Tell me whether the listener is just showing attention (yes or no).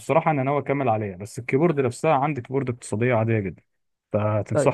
yes